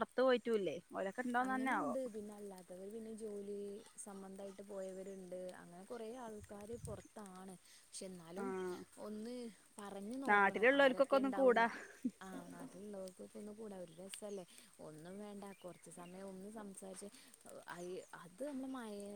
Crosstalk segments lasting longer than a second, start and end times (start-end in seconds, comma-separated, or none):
10.3-11.7